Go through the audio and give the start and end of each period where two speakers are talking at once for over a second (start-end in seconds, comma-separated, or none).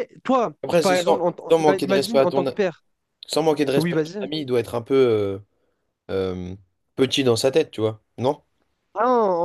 0.6-2.4